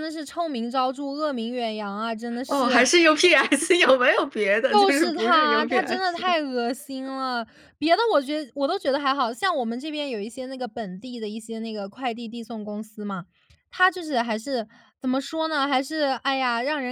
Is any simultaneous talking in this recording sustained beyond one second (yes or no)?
yes